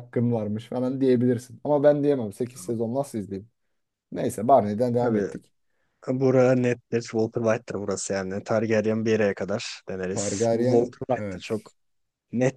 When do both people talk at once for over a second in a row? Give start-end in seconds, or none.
10.1-11.7